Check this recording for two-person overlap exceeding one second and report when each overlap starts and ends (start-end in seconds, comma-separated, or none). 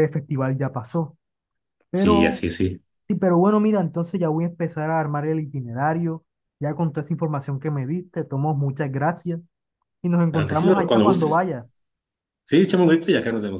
10.3-11.6